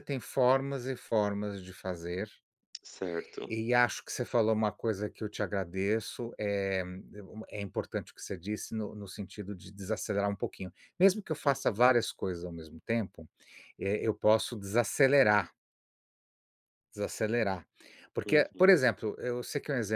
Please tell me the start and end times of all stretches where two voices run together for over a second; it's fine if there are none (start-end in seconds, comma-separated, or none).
none